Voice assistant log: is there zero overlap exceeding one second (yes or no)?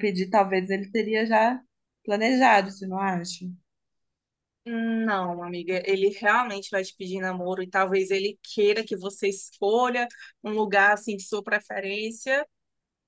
yes